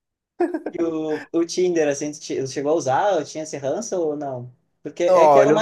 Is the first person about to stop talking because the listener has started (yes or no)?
no